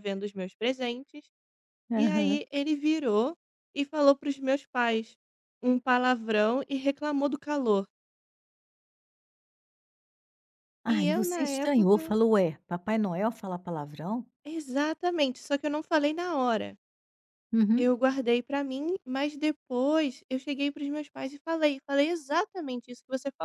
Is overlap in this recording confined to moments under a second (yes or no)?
no